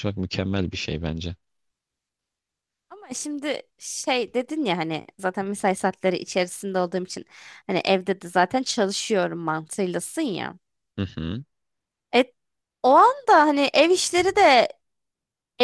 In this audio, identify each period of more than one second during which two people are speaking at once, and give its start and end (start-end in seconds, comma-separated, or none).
none